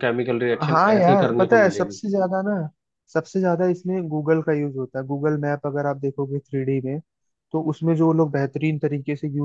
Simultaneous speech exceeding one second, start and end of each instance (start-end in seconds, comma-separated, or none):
0.7-2.0